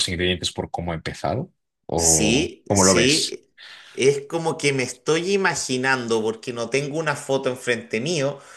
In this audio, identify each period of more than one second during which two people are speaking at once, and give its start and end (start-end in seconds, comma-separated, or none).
1.9-3.4